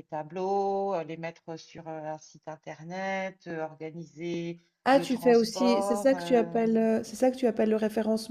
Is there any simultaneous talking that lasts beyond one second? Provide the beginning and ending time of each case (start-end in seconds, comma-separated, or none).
4.8-6.6